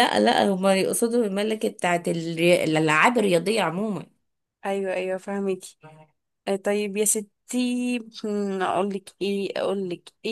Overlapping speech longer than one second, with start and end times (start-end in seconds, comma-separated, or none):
none